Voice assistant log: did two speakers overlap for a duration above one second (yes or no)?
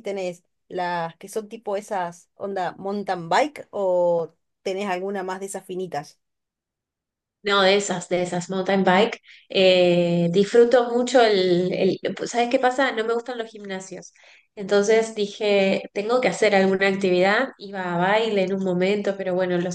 no